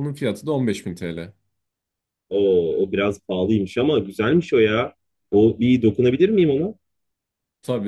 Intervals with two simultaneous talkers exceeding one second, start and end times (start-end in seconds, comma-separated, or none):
none